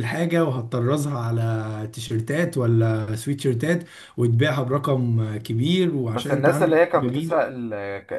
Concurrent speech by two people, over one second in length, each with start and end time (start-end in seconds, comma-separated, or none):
6.1-7.5